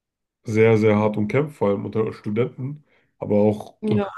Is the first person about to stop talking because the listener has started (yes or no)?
no